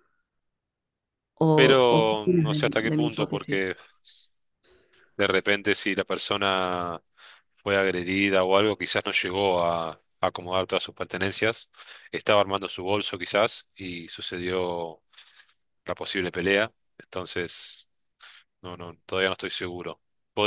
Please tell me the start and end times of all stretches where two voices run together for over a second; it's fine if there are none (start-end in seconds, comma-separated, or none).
1.9-3.7